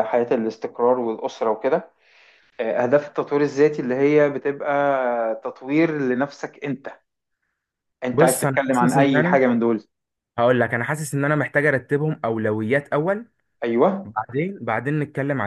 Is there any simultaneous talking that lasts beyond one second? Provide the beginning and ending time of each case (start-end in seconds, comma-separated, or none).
8.1-9.4